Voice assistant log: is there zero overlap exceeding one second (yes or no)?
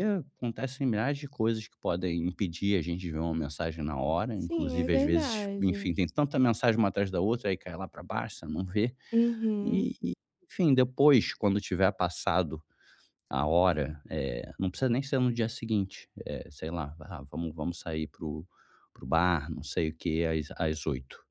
no